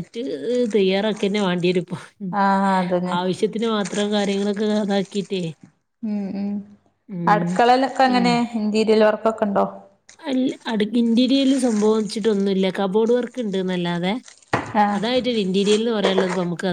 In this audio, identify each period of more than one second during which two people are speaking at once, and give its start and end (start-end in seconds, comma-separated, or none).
none